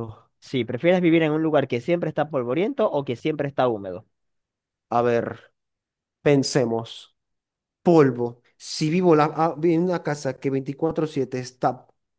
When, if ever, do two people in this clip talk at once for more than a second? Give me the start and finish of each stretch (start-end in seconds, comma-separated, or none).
none